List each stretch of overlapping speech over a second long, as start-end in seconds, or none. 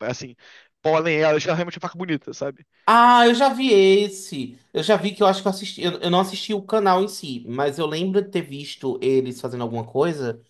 none